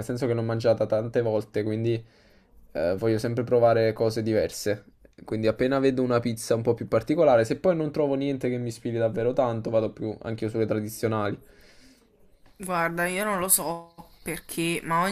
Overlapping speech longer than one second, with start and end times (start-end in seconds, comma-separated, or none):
none